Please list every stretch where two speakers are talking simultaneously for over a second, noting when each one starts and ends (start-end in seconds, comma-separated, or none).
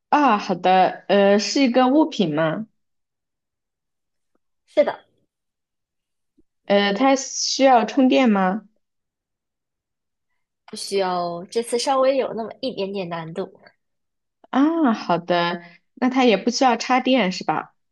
none